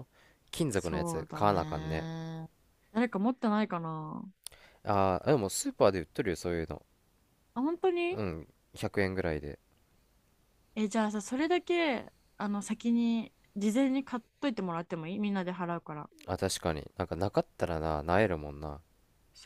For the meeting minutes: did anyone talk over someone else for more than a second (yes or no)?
yes